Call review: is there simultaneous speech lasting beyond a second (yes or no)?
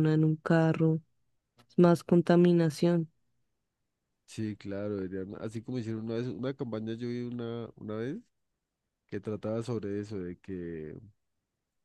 no